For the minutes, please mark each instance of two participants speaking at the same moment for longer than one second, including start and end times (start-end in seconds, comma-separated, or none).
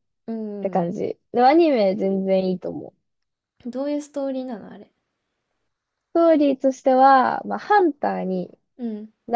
none